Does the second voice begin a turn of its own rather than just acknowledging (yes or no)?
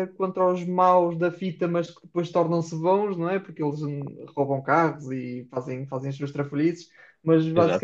no